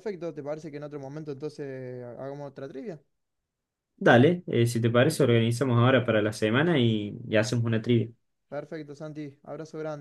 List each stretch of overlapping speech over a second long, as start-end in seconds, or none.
none